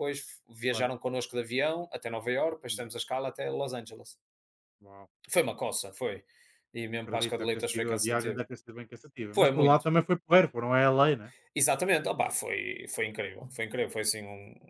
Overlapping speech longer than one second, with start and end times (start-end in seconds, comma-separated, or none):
7.0-8.4